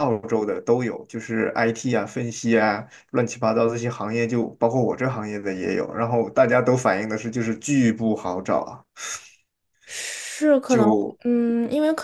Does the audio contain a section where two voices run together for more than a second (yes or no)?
no